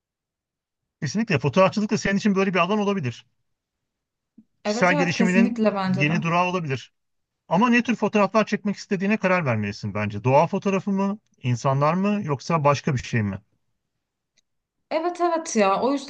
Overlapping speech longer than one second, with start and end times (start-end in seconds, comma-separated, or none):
4.6-6.1